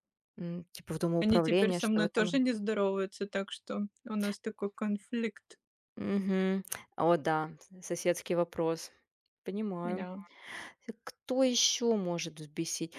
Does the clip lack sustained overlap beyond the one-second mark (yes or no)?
no